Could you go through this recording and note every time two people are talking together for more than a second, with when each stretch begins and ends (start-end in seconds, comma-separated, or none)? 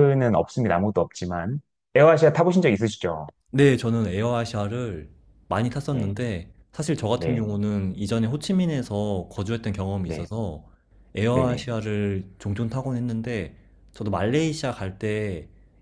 none